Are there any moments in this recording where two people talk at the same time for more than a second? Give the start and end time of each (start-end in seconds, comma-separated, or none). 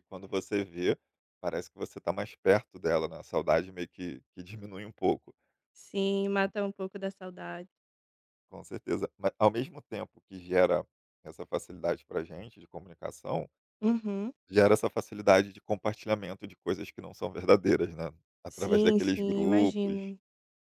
18.5-20.1